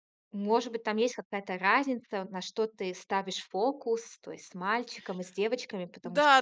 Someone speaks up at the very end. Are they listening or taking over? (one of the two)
taking over